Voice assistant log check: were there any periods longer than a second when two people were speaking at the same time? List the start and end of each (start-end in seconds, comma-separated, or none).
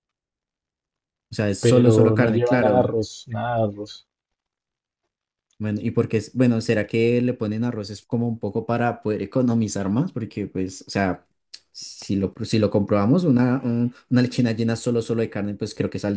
1.6-2.9